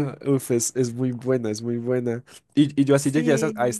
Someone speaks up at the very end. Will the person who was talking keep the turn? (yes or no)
yes